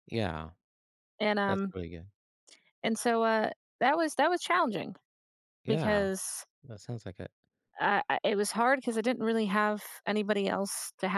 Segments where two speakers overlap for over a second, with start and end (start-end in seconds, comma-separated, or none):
none